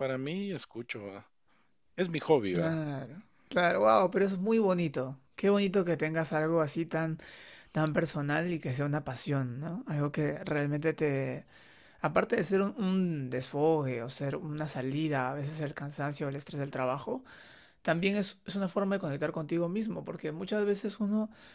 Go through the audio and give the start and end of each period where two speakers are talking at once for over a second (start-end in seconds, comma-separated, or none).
none